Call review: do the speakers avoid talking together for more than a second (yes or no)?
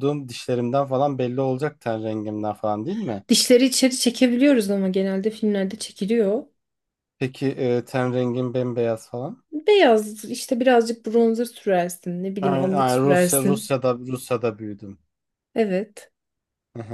no